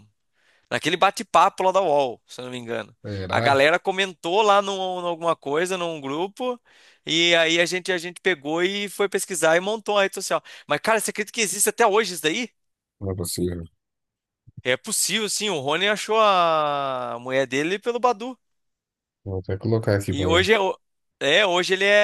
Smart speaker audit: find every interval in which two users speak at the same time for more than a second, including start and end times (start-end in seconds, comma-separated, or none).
none